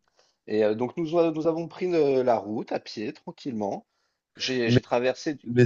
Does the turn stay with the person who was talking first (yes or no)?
no